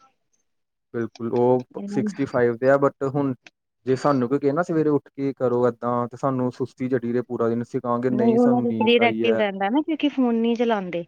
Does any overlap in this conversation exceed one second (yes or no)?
yes